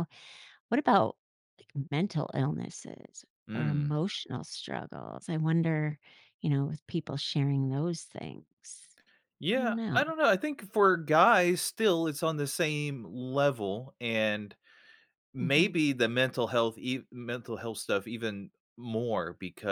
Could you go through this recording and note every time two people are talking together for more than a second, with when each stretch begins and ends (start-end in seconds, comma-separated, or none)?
none